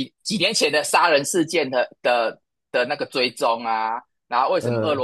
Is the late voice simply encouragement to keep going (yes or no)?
yes